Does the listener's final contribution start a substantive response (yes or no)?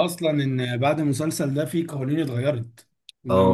yes